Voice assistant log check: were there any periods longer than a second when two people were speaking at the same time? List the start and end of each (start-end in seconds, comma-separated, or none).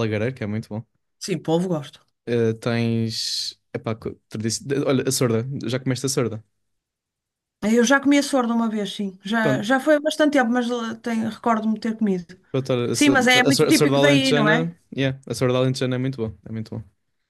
12.9-14.7